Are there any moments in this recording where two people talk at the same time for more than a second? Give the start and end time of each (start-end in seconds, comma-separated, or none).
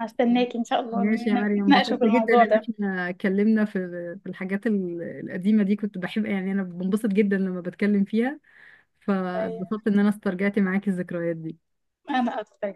0.9-2.7